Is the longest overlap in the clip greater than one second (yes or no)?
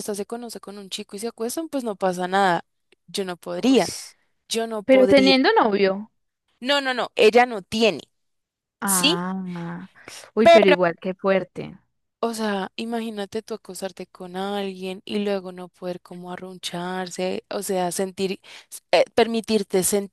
no